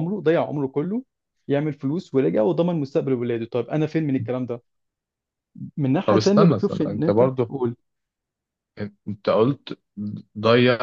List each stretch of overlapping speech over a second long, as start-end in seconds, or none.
6.0-7.5